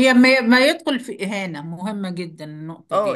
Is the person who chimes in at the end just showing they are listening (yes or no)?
no